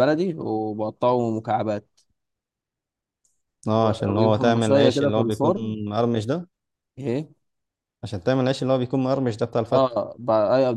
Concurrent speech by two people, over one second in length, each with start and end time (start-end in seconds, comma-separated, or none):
4.1-5.7